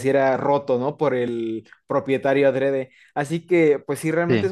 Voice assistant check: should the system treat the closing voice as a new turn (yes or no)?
no